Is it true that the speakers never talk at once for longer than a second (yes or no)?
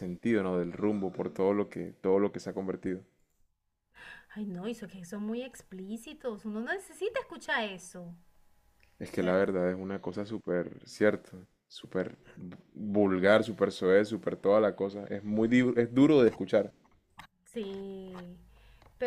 yes